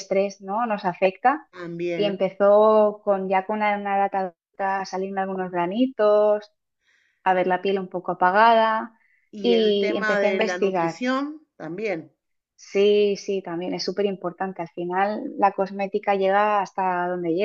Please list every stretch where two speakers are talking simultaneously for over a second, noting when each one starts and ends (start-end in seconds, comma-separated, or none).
9.4-11.0